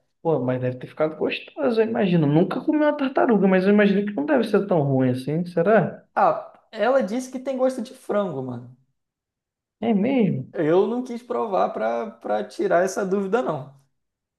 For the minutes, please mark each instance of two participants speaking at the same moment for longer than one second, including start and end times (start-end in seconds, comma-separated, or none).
none